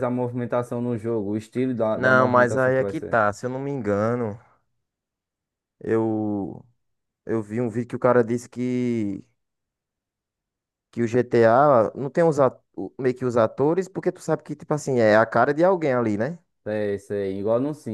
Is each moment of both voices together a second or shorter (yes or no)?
no